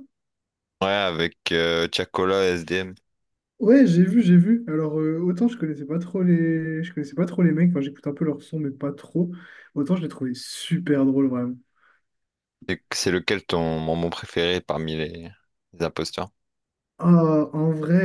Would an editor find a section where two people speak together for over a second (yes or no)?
no